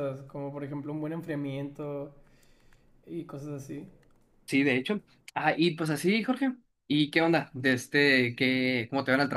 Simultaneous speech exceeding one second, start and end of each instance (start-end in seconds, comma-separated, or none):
none